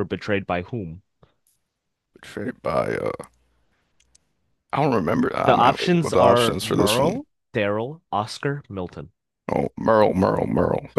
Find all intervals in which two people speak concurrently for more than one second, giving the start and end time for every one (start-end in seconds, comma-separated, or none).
5.4-7.2